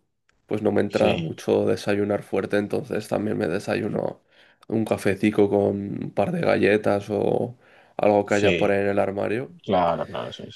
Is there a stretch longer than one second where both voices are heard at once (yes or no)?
no